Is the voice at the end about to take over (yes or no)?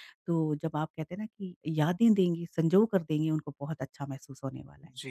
yes